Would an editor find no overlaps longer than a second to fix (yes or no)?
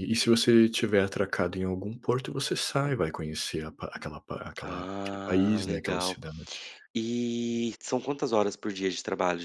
no